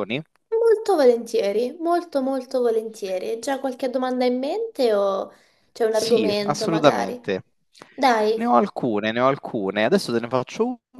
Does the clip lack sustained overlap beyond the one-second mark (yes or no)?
no